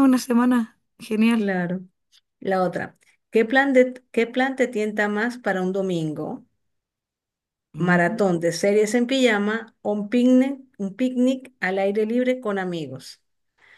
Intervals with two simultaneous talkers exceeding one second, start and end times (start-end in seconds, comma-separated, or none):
none